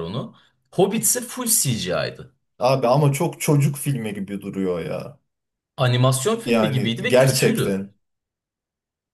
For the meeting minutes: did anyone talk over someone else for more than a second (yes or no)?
yes